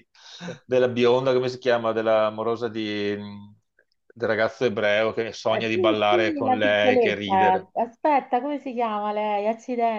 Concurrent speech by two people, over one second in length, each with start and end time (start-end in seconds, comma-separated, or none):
5.5-7.7